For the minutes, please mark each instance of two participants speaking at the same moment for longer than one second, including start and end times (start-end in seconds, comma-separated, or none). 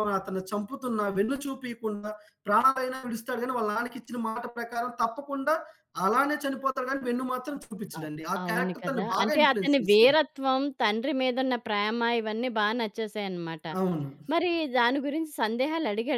8.0-10.2